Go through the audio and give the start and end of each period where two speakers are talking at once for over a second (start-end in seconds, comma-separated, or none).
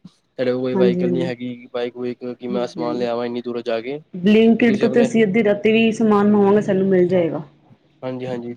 none